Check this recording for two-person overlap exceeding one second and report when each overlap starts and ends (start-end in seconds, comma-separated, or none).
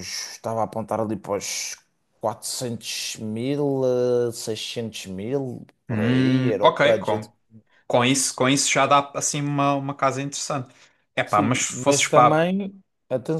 5.9-7.3, 11.2-12.4